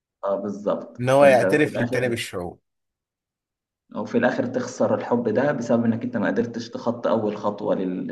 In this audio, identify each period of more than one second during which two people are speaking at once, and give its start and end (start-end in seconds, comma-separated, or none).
1.0-2.2